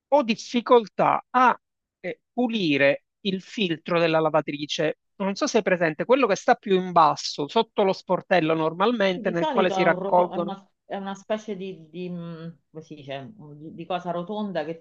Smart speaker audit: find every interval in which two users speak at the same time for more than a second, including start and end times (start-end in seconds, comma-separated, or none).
9.1-10.5